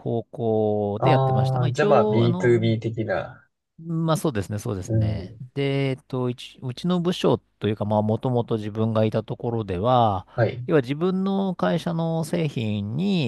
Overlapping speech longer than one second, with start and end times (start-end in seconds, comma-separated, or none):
1.0-2.8